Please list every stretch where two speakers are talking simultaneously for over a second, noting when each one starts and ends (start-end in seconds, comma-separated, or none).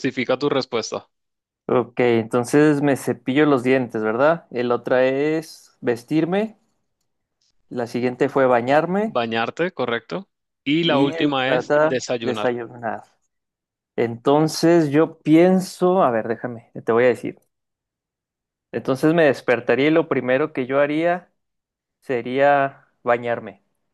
10.8-12.5